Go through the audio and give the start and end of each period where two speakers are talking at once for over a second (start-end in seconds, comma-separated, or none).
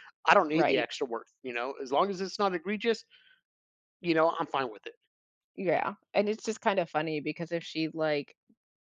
none